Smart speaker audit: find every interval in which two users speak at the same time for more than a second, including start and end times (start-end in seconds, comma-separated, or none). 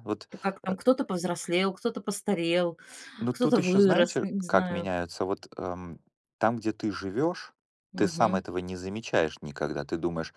3.3-4.9